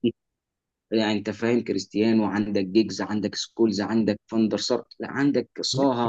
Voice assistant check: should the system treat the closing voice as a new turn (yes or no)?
no